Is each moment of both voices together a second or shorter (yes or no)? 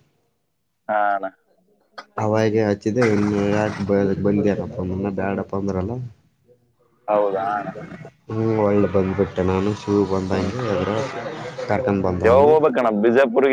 yes